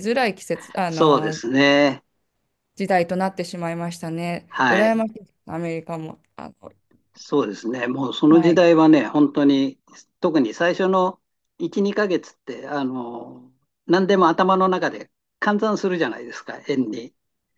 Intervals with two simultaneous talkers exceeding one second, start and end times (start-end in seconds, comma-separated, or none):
none